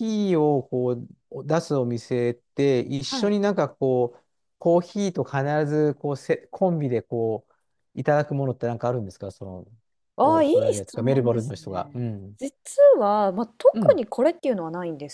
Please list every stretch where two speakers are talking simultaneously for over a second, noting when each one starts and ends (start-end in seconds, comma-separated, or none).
10.2-12.0